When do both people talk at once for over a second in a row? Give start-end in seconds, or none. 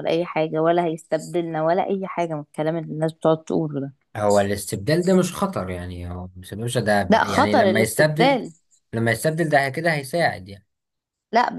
7.1-8.4